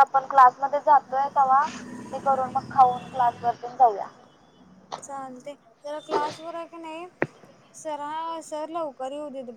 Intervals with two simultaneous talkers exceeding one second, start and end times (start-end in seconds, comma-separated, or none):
none